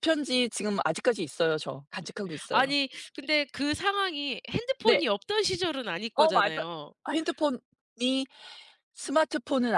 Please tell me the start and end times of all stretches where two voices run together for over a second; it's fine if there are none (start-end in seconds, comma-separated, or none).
none